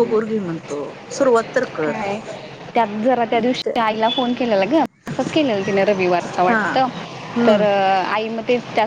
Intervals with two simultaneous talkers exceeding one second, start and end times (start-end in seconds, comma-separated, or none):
none